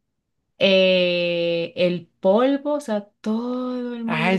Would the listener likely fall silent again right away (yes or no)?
no